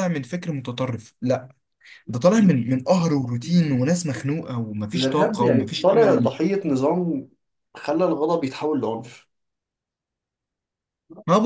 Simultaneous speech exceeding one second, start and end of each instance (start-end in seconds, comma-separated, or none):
4.9-6.3